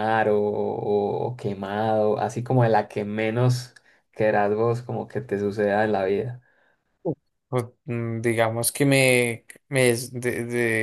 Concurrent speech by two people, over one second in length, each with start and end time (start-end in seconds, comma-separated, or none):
none